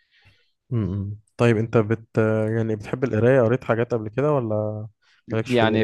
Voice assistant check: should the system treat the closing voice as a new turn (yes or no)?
yes